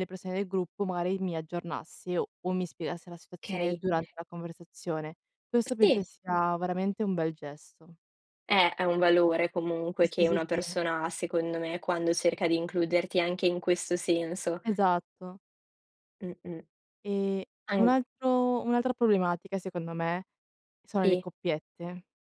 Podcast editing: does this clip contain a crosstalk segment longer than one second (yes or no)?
no